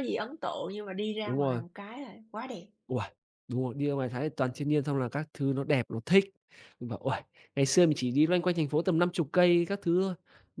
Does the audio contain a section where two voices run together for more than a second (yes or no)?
no